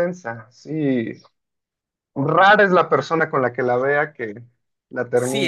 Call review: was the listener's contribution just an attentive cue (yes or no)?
no